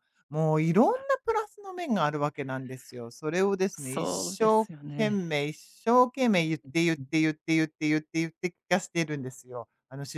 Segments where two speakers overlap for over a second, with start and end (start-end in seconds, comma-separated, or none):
3.7-5.2